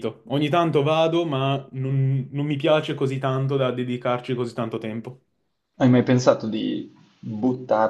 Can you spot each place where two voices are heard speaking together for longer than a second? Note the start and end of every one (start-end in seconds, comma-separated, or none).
none